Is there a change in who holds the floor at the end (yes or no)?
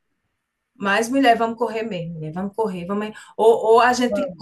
no